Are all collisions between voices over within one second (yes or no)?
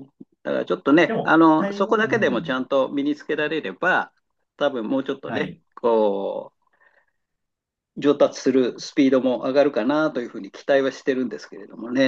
no